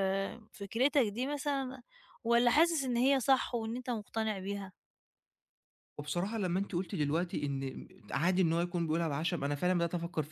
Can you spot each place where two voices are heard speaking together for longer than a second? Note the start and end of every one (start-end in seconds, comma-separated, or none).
none